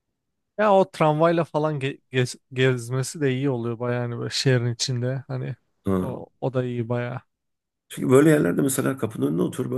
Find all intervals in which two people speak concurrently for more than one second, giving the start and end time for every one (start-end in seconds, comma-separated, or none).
none